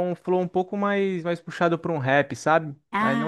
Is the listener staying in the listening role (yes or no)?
yes